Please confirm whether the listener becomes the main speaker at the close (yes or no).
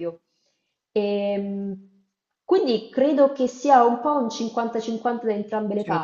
no